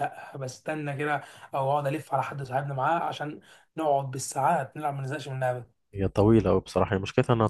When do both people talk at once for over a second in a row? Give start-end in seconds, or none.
none